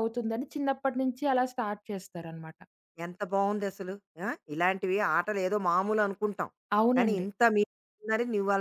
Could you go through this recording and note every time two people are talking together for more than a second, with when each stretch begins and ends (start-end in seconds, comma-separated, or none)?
none